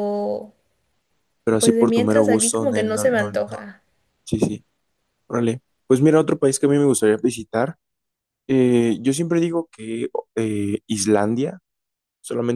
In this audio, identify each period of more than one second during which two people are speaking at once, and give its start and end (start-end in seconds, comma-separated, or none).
1.6-3.6